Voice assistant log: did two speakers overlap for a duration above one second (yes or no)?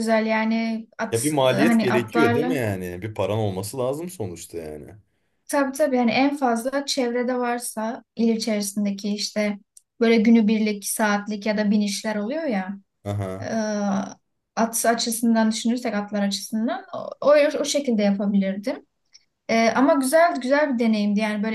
yes